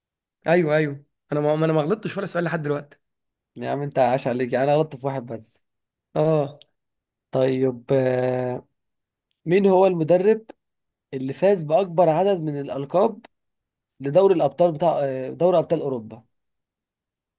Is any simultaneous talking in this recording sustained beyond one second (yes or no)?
no